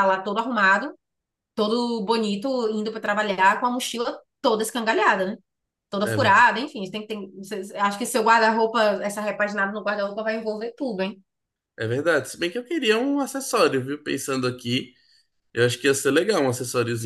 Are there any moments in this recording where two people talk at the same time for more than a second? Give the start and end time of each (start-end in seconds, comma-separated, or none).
none